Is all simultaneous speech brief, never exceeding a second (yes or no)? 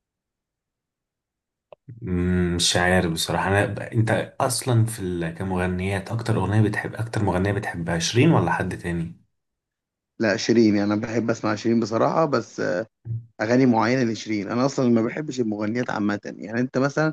yes